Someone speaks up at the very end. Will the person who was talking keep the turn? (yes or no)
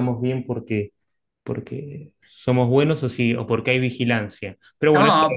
no